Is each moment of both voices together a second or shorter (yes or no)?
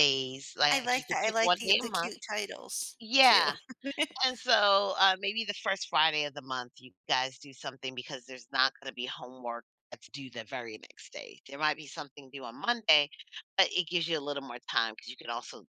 no